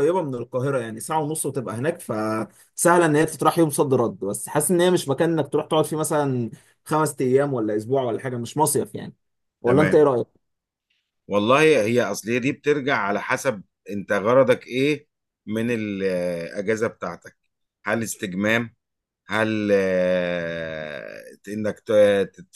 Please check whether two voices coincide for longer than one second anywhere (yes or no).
no